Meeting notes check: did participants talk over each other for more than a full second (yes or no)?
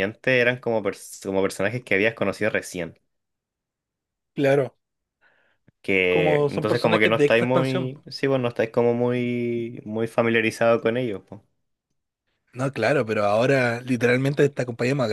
yes